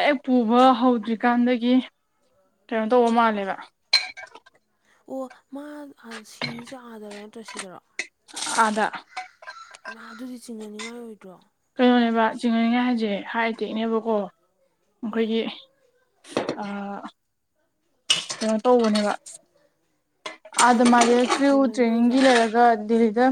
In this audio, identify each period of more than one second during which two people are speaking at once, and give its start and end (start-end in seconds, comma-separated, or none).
20.6-22.3